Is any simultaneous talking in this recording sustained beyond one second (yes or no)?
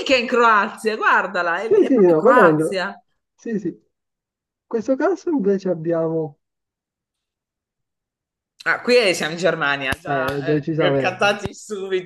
yes